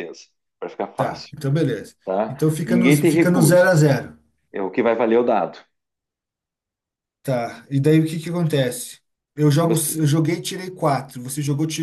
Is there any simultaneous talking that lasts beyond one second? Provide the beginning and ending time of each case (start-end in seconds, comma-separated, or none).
2.0-3.8